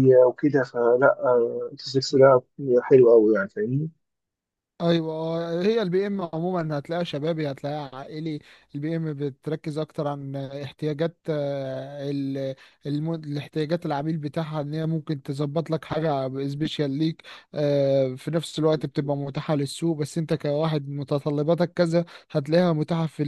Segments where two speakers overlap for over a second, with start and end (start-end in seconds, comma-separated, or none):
none